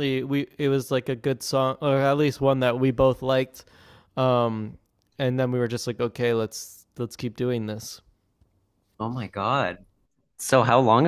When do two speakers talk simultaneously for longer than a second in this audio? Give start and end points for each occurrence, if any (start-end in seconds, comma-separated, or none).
none